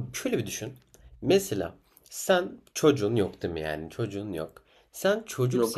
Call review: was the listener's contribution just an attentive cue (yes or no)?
yes